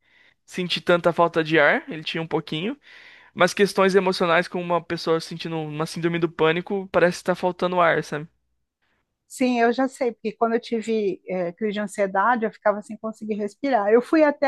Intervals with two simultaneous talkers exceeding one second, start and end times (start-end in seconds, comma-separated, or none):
none